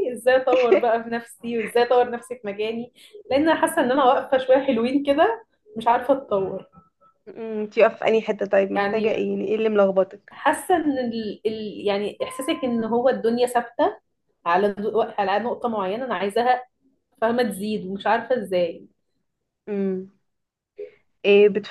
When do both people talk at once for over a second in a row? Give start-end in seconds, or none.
none